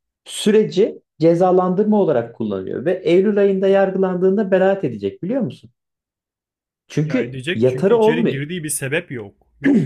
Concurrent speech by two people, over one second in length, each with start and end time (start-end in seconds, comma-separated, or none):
7.0-8.4